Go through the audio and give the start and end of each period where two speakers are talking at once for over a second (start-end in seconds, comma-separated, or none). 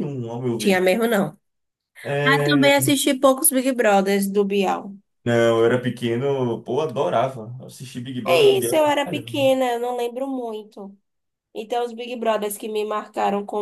8.2-9.5